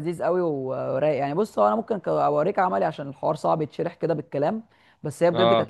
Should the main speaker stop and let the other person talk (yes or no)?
no